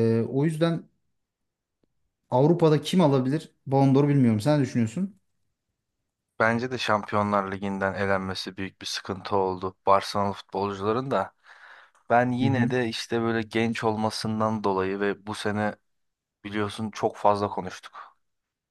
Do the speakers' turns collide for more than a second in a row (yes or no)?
no